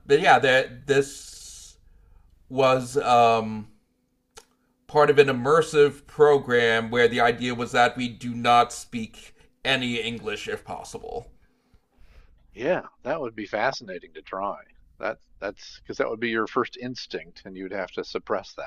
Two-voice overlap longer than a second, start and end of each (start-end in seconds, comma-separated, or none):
none